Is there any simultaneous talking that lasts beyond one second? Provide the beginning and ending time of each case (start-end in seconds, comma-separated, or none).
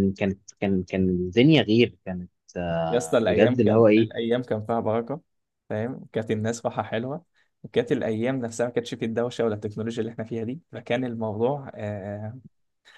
2.9-4.1